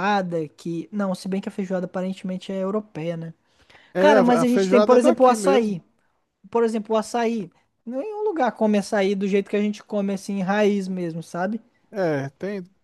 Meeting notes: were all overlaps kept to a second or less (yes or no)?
no